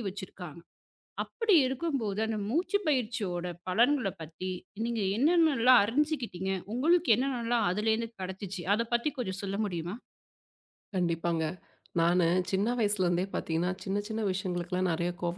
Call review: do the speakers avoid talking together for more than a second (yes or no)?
yes